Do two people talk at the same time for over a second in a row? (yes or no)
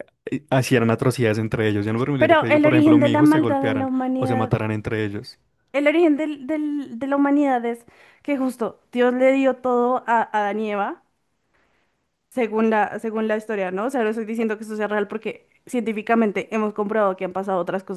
yes